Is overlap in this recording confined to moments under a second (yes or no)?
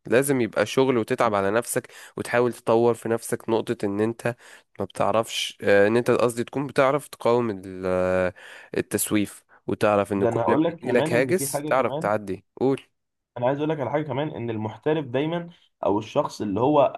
no